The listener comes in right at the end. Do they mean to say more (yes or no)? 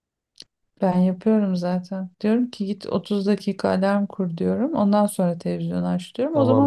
yes